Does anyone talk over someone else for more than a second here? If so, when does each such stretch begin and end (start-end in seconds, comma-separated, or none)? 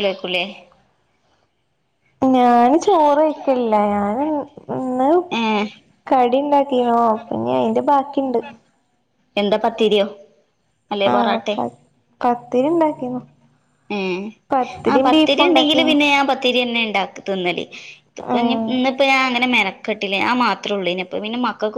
none